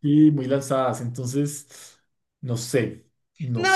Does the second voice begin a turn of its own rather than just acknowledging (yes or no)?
yes